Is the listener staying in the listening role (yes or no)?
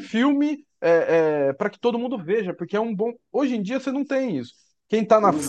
no